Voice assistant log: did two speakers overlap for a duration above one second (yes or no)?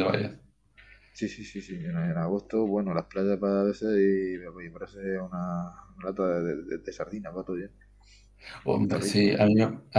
no